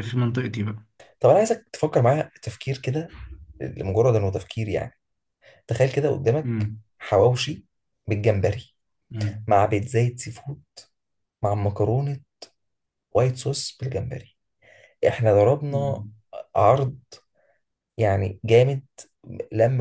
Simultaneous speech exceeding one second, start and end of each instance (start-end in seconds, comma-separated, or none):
none